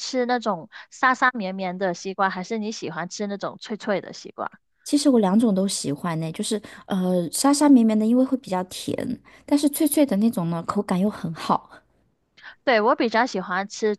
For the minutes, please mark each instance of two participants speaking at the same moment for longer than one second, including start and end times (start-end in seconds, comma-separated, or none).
none